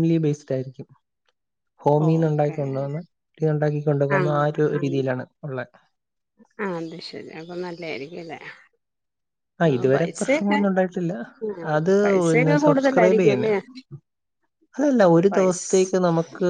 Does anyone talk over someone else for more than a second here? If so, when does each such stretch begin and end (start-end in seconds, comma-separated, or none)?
12.0-13.5